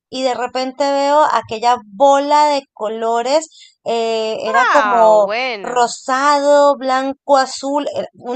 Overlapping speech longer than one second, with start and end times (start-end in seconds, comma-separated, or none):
4.5-6.0